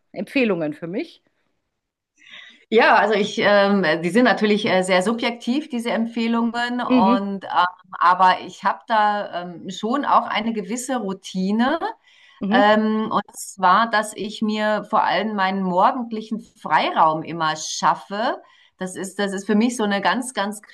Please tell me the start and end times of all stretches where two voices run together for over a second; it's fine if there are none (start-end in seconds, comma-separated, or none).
none